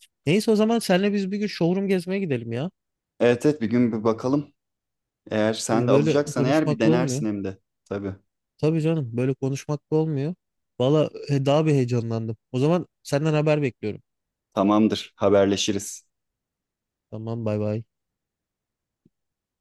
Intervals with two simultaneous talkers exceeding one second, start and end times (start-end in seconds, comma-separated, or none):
5.7-7.2